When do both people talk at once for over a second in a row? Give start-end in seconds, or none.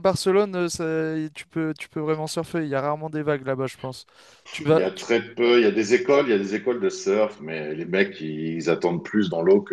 none